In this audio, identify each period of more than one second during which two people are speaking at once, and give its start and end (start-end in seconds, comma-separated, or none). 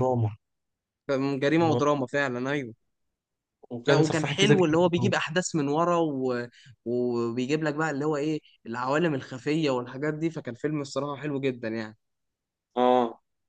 3.9-5.1